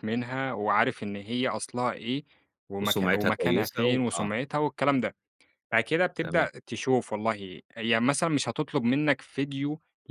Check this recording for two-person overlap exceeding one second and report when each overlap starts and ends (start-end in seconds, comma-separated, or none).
2.8-4.3